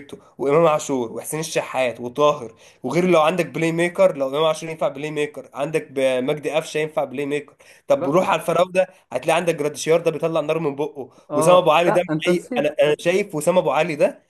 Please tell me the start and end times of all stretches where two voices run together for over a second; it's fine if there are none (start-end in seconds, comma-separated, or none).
11.3-12.7